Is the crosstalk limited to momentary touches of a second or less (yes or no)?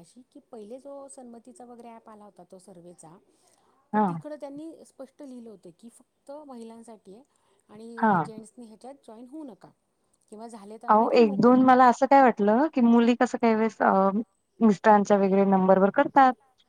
yes